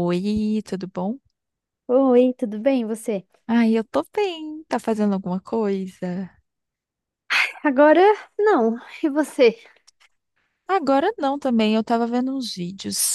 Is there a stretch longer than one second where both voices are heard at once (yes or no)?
no